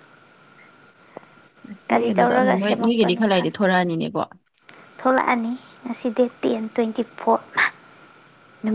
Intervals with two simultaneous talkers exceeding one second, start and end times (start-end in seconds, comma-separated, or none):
1.9-3.6